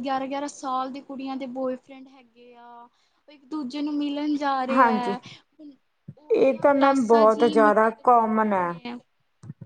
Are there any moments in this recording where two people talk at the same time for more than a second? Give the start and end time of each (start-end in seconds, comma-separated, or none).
6.3-8.7